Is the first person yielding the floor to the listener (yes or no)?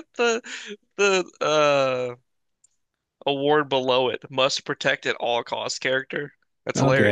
yes